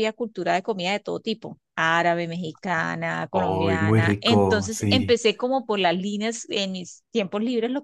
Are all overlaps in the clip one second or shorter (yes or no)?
no